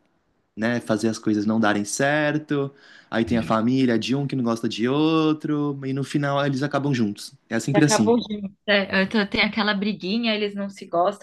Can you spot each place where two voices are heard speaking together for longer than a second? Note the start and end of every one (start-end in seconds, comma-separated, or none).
none